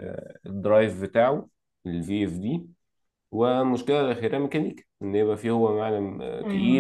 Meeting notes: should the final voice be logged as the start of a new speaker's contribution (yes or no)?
yes